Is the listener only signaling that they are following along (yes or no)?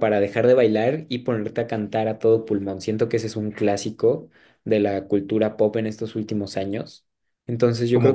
no